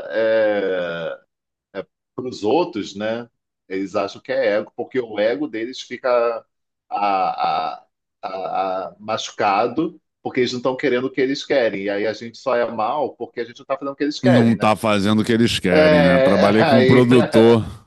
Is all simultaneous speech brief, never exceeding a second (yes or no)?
no